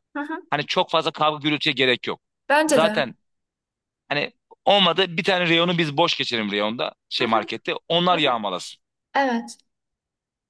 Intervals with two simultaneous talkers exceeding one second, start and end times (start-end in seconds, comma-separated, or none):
none